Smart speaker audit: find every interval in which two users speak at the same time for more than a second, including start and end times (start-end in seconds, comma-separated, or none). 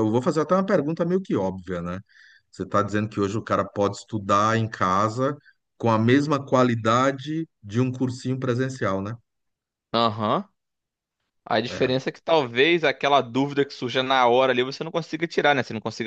none